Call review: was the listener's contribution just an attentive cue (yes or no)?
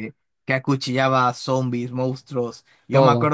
yes